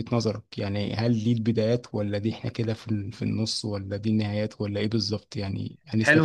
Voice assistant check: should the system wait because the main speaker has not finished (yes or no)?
no